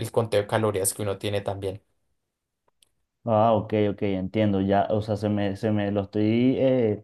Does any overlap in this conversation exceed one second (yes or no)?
no